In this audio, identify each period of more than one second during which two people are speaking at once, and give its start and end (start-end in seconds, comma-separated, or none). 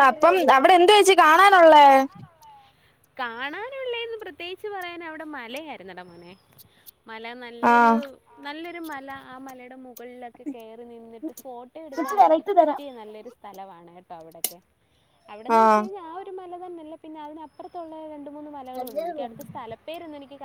none